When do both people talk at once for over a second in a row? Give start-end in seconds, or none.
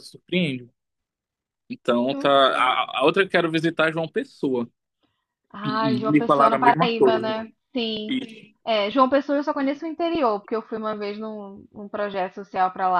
5.7-7.2